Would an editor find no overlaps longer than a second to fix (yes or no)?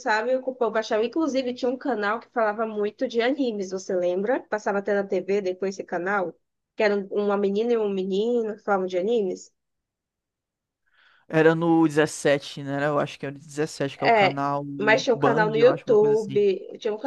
no